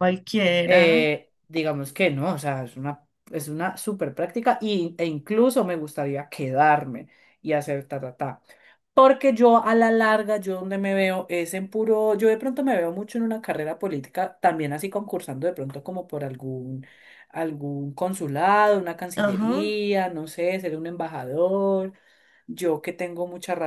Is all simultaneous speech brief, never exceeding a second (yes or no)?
yes